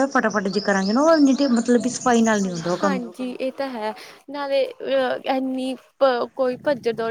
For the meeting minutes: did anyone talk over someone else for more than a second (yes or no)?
no